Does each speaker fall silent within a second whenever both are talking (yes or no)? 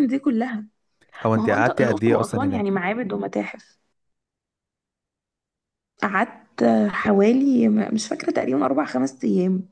no